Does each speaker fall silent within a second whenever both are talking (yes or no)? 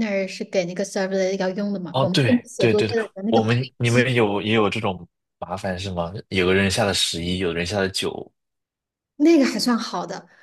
no